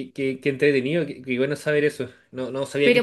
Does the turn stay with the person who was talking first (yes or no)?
no